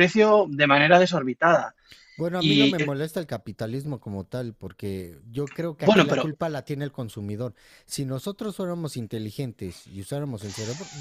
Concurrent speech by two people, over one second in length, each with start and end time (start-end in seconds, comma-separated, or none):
none